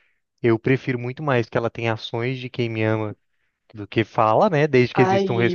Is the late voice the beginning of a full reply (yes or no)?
yes